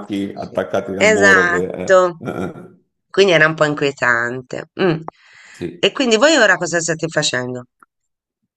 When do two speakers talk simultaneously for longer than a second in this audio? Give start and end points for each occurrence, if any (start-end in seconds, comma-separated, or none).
0.9-2.2